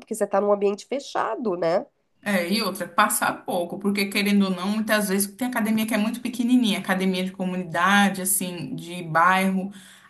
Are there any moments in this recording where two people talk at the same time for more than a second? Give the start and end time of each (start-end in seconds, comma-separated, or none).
none